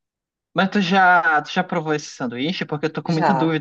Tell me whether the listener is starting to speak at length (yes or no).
no